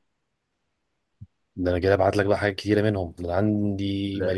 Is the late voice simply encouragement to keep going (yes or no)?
yes